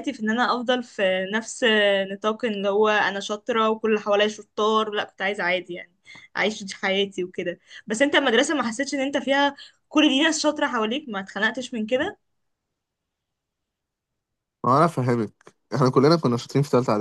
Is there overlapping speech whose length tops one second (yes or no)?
no